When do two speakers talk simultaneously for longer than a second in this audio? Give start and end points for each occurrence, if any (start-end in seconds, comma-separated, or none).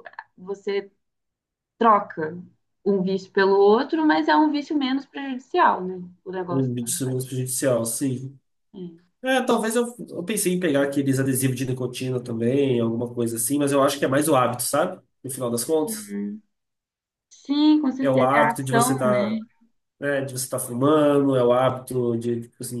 18.0-19.3